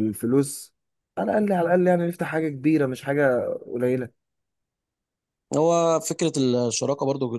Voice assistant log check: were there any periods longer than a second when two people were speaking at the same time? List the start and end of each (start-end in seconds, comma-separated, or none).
none